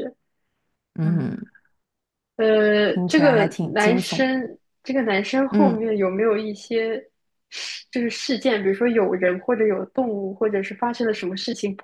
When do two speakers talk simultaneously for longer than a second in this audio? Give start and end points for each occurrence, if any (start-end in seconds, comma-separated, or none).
2.8-4.3